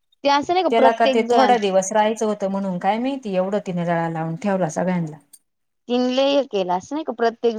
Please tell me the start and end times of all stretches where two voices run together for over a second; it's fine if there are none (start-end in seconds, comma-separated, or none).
none